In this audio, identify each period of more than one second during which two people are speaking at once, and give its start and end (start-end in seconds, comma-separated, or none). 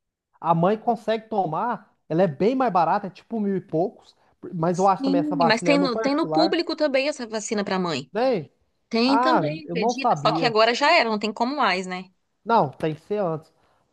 4.8-6.6, 9.1-10.6